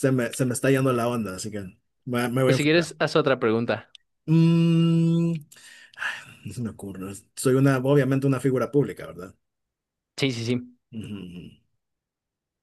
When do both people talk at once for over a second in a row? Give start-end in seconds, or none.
none